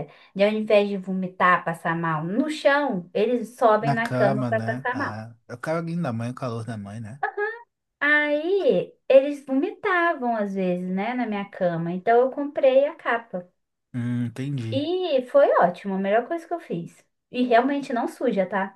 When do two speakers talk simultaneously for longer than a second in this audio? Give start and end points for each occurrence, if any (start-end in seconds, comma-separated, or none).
3.8-5.2